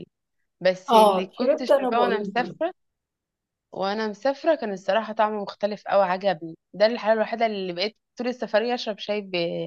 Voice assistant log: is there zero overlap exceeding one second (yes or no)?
no